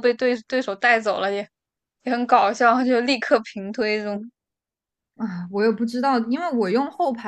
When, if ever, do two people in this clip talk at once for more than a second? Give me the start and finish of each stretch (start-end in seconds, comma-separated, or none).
none